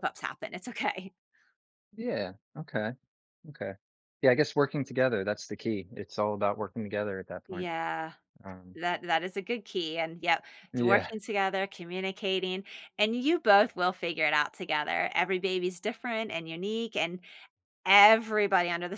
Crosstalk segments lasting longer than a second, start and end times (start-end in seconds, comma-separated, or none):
none